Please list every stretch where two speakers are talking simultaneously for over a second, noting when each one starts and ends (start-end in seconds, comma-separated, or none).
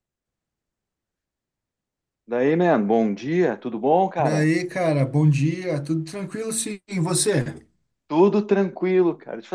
none